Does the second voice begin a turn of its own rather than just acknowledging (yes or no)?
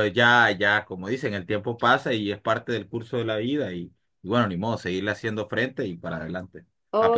yes